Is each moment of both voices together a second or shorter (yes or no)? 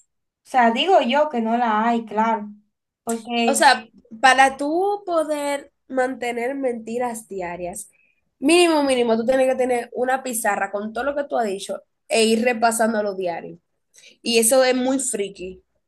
yes